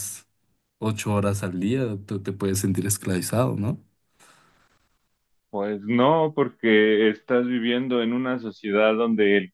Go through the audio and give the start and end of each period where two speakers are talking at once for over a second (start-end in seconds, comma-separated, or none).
none